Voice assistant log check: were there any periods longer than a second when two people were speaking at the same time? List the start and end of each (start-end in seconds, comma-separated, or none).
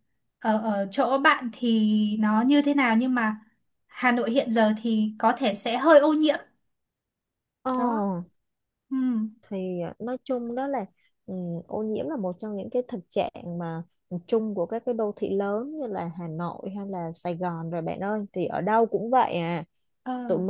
none